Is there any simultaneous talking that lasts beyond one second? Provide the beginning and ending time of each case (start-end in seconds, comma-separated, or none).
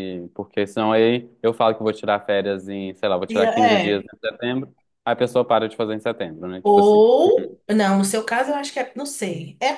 none